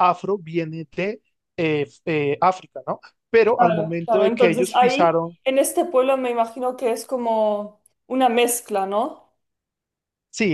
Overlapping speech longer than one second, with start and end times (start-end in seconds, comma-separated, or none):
3.4-5.4